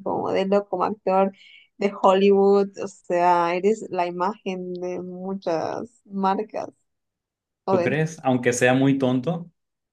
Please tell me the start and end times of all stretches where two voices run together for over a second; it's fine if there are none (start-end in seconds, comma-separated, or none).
none